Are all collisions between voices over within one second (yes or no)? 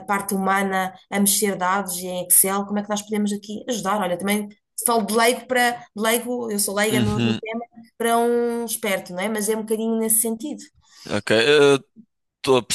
yes